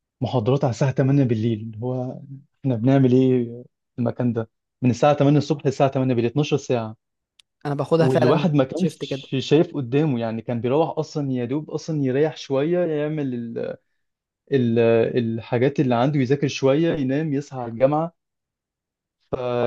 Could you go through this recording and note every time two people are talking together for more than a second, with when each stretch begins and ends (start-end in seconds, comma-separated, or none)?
8.0-9.3